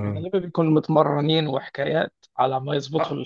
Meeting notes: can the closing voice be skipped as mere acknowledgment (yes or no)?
no